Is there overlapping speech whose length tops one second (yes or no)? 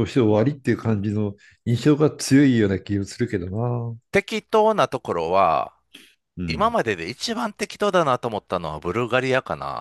no